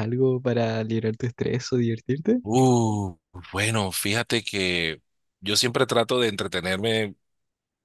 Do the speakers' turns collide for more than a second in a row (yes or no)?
no